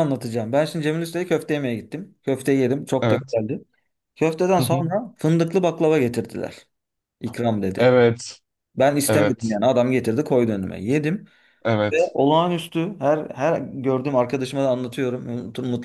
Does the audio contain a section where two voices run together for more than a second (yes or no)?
no